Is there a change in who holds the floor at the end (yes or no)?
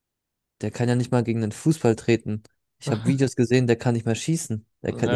yes